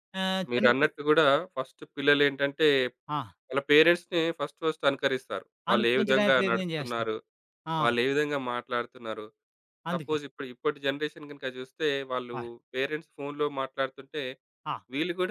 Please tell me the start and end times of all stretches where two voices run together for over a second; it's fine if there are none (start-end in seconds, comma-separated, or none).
5.7-7.1